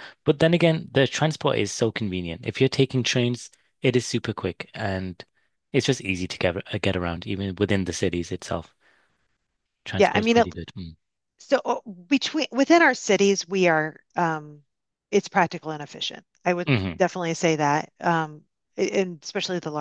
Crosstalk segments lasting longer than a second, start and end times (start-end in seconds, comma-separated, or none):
none